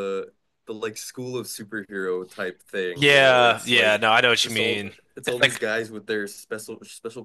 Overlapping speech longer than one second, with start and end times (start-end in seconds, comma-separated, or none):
2.9-5.6